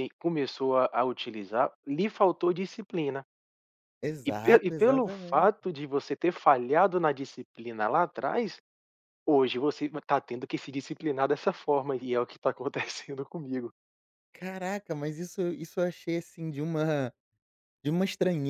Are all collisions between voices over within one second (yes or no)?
no